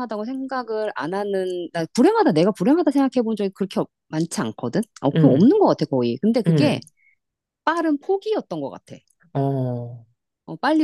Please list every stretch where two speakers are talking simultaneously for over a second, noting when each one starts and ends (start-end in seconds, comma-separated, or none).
none